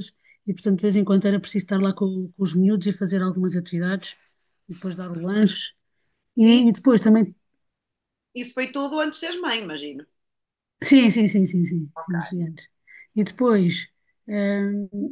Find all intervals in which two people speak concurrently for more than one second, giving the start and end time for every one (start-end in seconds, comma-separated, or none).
none